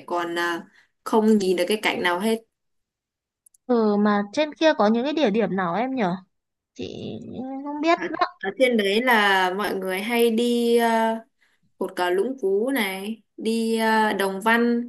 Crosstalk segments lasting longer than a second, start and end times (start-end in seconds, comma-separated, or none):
none